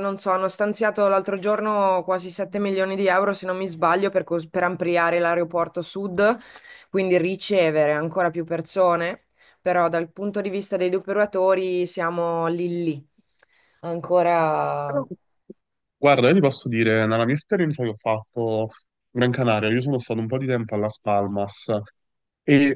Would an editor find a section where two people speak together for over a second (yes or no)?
no